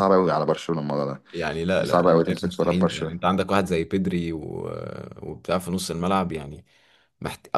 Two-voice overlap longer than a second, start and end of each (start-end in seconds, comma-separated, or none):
1.8-3.1